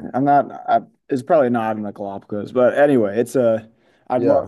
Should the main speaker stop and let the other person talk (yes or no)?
no